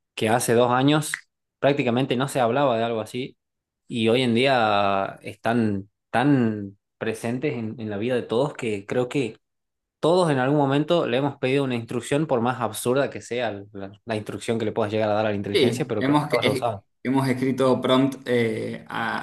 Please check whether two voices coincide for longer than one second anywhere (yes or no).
yes